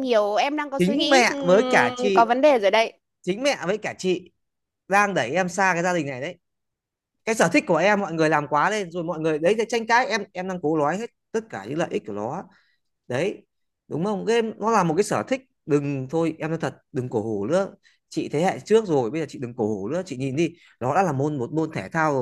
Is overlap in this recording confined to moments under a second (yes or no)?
no